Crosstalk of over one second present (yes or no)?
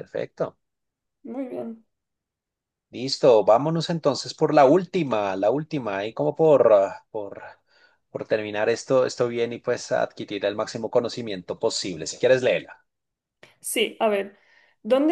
no